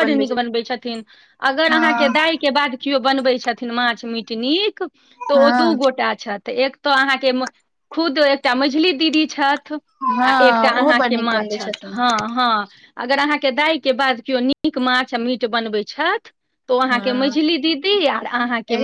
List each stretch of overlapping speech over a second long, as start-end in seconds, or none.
10.0-11.9